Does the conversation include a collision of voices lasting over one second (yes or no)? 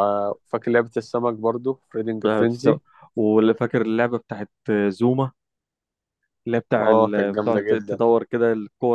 yes